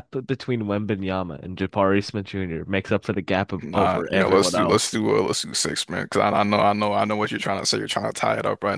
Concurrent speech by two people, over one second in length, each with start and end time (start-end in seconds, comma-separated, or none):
3.6-5.0